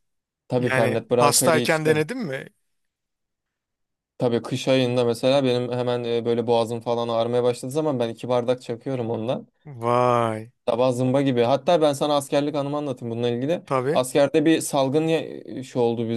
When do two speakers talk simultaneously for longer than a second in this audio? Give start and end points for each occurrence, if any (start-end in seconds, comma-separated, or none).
0.6-2.1